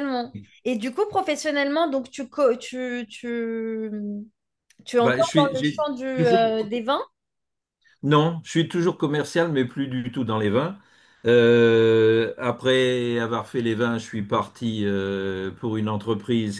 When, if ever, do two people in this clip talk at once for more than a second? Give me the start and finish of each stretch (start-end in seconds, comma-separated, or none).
5.0-6.7